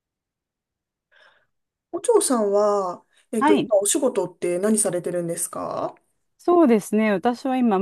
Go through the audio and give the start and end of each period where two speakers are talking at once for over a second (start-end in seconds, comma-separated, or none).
none